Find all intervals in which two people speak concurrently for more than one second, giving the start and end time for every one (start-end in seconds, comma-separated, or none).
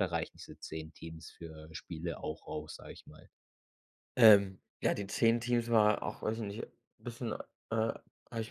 none